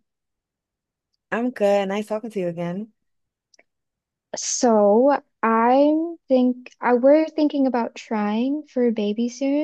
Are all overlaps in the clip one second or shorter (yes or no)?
yes